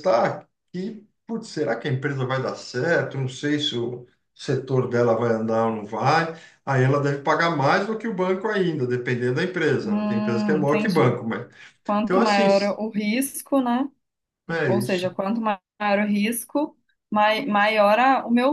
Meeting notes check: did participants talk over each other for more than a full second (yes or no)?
yes